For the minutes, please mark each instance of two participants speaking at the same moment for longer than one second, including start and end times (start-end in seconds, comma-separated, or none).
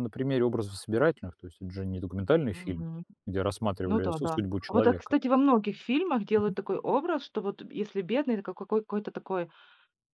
3.9-5.1